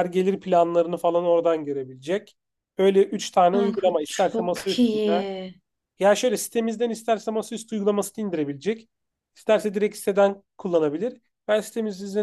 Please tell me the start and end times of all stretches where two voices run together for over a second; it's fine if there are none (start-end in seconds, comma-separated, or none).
3.5-5.2